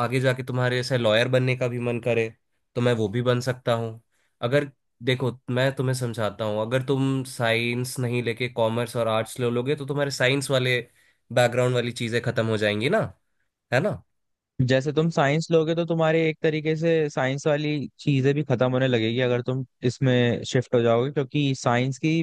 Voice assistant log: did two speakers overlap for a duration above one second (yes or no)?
no